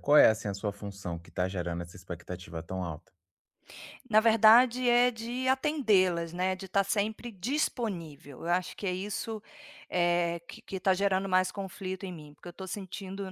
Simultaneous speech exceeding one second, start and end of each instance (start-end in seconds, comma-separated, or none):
none